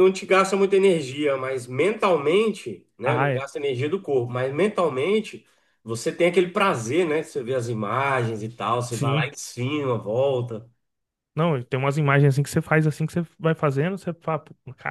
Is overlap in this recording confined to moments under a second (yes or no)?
yes